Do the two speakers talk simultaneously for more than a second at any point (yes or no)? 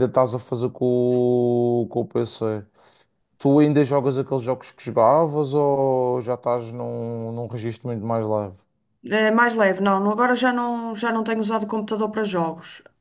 no